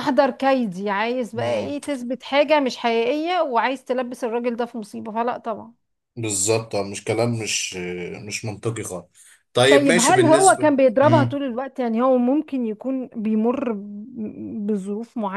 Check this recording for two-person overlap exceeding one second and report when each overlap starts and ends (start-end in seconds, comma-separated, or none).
9.7-11.4